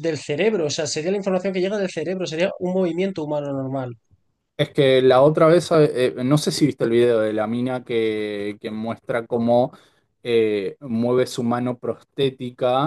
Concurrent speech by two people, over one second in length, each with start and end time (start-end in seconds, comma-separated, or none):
none